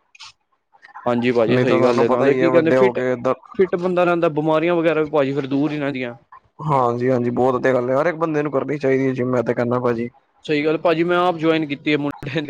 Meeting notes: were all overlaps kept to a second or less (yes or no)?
no